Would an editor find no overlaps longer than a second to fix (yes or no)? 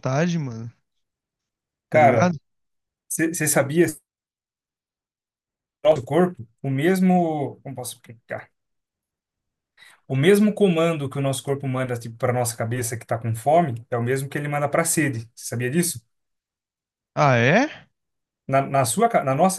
yes